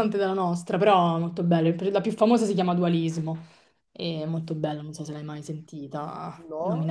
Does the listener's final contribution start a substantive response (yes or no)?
yes